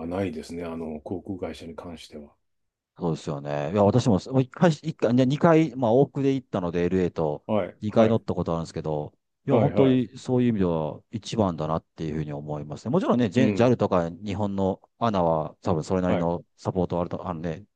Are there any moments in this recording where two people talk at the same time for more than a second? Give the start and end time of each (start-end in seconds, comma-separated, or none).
none